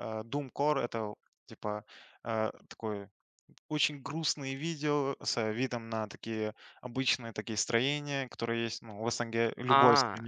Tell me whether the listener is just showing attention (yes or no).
yes